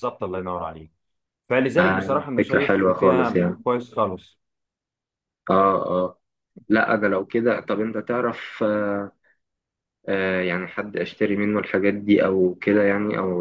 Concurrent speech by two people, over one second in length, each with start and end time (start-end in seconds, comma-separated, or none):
1.7-3.5